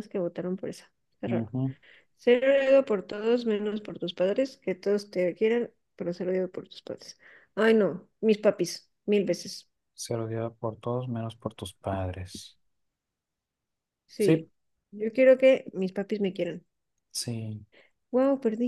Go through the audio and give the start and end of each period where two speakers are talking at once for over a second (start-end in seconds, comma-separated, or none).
none